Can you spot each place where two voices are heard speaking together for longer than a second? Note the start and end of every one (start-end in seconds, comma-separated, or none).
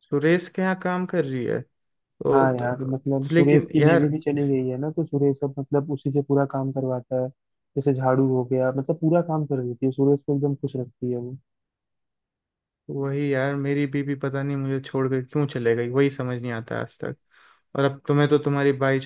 2.3-4.1